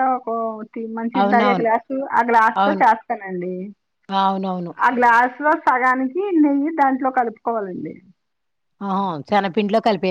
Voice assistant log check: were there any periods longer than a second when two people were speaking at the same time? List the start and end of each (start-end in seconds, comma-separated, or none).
none